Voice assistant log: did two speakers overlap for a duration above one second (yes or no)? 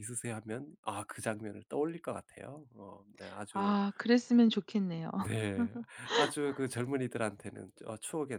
no